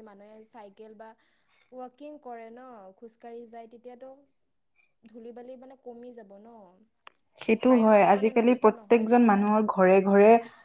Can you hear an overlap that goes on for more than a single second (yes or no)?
yes